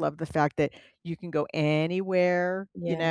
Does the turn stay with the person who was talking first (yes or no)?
yes